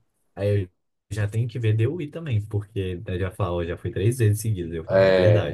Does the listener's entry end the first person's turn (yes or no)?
yes